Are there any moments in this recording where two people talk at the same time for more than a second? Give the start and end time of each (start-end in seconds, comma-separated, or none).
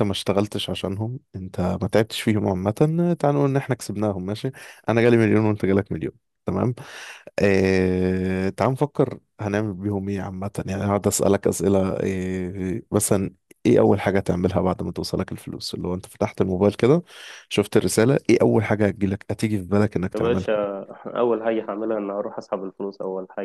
none